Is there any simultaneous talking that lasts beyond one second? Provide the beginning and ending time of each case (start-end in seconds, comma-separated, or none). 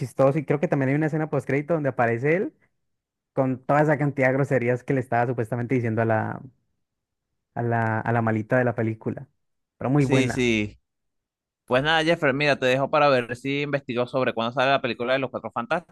none